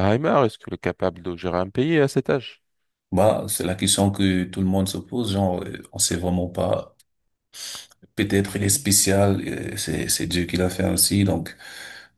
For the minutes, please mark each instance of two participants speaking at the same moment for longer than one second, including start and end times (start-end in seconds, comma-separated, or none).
none